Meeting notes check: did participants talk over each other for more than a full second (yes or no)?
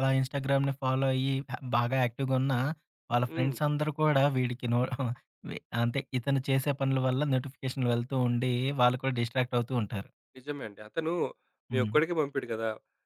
no